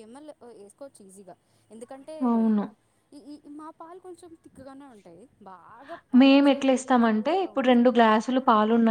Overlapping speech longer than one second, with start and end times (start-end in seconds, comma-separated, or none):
6.2-7.8